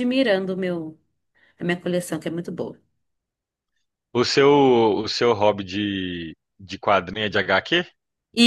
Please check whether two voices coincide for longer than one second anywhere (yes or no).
no